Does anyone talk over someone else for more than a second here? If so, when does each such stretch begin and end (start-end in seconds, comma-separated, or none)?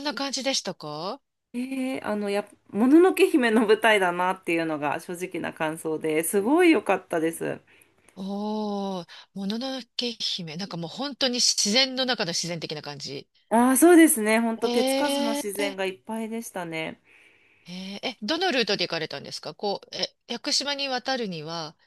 none